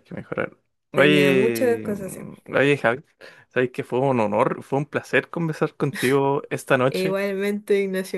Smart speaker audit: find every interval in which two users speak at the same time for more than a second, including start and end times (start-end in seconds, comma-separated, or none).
0.9-2.3